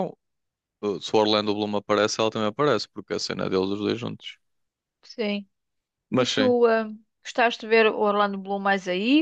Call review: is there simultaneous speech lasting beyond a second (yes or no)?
no